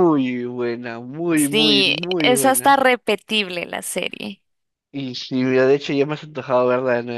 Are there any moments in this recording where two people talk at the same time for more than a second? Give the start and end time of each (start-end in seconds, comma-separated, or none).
1.4-2.8